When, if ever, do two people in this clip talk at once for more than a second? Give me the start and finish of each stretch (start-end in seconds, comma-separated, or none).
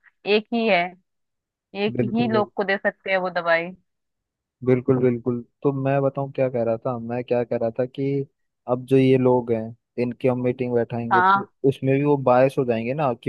none